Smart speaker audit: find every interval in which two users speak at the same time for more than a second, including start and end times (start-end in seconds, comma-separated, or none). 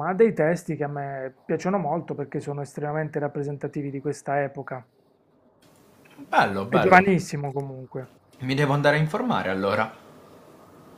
none